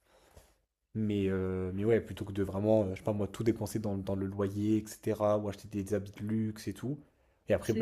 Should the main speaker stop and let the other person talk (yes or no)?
no